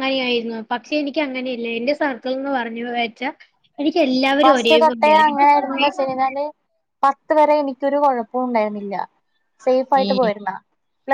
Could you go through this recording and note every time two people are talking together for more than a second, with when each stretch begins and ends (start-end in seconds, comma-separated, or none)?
4.4-5.9